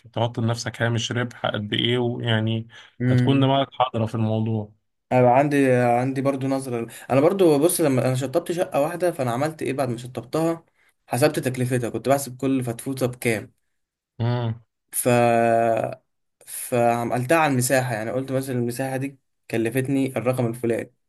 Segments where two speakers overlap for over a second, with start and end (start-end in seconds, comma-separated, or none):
none